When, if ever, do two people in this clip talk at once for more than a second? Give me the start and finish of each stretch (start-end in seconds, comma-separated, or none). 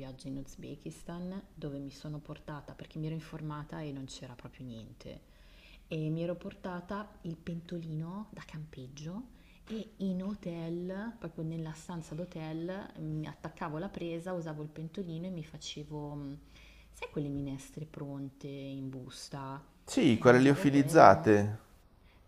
20.1-21.4